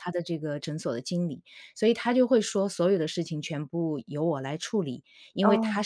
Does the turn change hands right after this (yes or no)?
no